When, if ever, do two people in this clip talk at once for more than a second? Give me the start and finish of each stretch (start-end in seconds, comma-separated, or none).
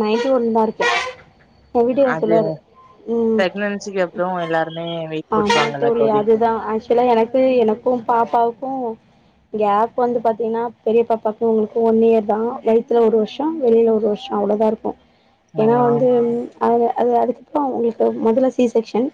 none